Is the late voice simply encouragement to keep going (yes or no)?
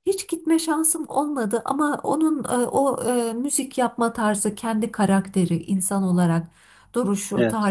yes